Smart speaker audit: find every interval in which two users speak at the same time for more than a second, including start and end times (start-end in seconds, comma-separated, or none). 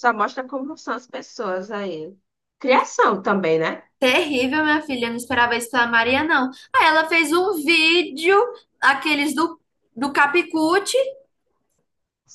none